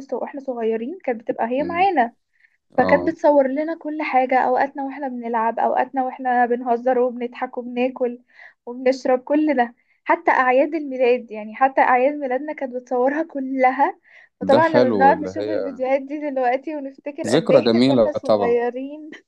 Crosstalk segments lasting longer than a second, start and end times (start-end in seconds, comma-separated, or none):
14.5-15.8, 17.2-18.6